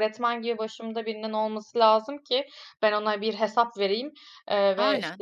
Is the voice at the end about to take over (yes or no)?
no